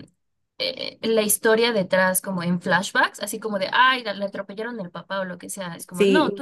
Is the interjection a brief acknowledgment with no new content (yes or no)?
yes